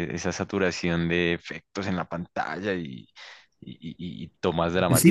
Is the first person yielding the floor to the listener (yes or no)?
yes